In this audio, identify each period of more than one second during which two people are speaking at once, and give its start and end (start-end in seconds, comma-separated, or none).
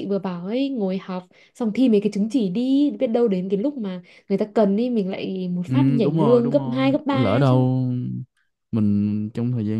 5.7-7.7